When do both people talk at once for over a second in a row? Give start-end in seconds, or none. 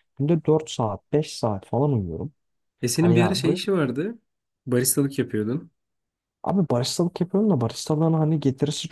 none